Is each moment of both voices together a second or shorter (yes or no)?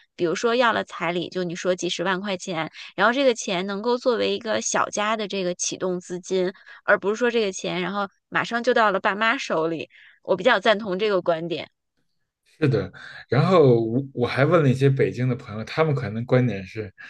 yes